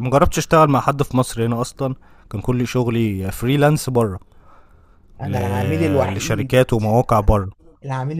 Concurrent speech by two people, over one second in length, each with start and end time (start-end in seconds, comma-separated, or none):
none